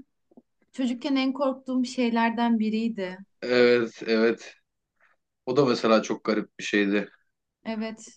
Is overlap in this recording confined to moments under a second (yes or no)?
yes